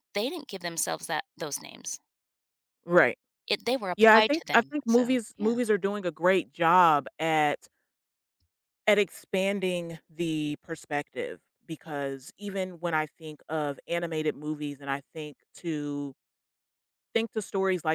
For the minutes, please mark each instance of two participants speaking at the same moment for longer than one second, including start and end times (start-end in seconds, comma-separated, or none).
3.9-5.6